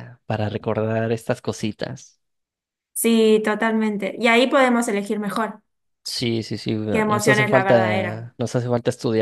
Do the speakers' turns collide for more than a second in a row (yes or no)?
yes